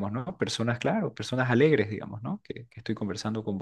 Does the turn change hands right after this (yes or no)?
no